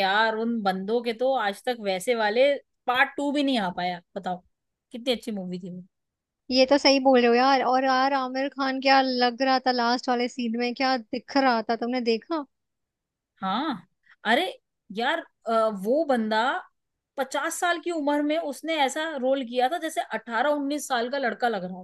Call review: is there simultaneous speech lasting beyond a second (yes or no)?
no